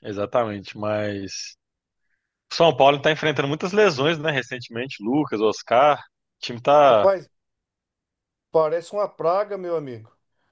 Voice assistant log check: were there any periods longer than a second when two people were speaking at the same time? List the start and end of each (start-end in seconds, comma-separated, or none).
none